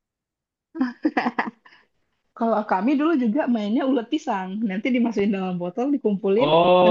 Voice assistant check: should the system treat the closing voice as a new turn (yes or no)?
yes